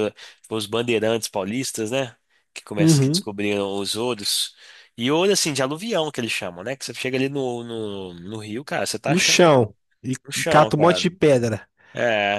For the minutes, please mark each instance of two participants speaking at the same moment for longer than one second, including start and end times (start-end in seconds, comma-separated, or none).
none